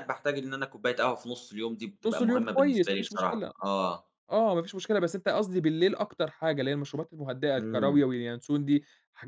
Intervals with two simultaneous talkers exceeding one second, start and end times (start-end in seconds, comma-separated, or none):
2.1-3.5